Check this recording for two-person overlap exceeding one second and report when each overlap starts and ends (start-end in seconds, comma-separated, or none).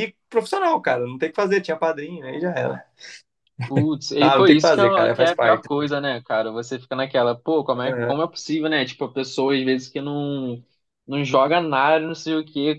4.2-5.7